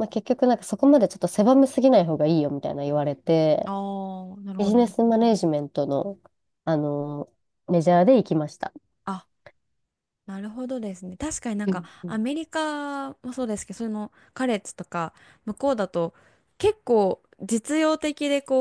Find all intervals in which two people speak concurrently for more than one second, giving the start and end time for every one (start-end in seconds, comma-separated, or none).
none